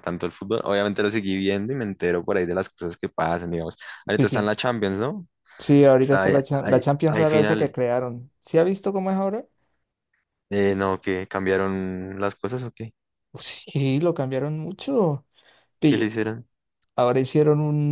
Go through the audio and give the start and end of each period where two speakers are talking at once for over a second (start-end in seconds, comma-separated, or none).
6.0-7.7